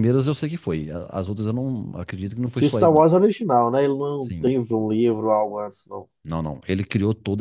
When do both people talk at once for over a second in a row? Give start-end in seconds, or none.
none